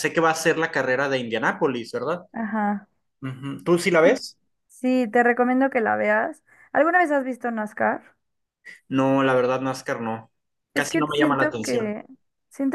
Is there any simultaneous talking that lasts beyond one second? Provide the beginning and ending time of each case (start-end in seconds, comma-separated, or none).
10.7-12.0